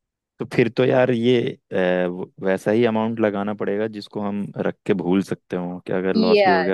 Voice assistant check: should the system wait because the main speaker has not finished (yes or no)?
no